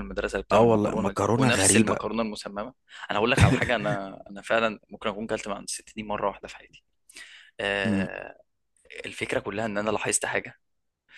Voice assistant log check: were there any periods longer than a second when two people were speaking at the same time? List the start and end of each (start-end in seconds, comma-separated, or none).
0.5-2.0